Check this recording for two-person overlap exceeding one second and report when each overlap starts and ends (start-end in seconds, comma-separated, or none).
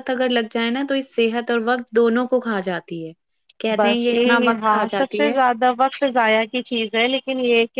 3.8-5.4